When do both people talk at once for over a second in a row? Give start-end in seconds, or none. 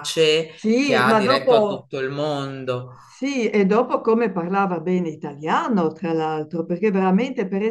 0.5-1.9